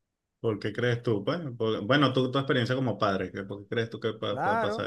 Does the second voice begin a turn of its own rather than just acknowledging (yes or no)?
yes